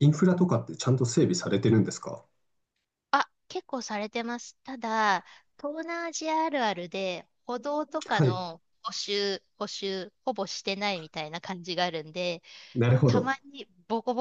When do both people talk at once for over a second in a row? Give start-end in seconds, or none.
none